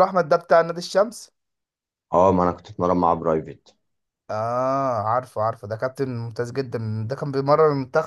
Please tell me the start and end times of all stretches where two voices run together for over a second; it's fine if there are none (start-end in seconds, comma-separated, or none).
none